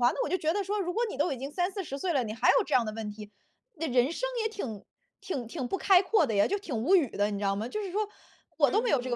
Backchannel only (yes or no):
yes